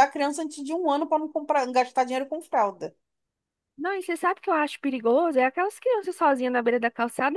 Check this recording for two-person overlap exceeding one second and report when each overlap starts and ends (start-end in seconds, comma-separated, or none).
none